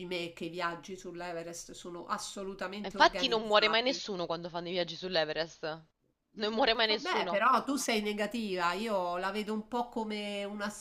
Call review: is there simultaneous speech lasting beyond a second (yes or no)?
yes